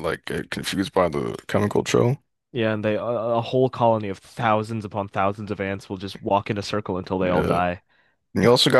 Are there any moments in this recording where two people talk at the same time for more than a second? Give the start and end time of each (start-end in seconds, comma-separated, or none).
none